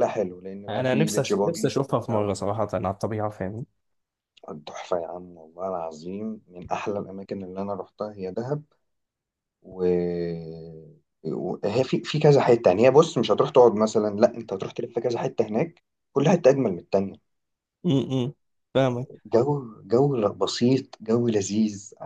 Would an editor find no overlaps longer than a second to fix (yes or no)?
no